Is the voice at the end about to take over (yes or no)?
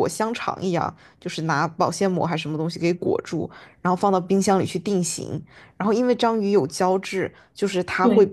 no